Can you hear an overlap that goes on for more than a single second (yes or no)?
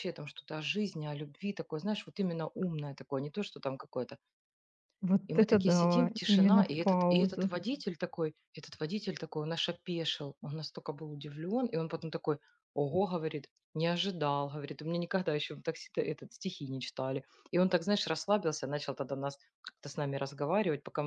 yes